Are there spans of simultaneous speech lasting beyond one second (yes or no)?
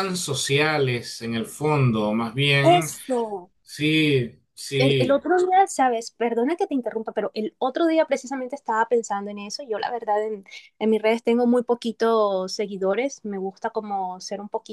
no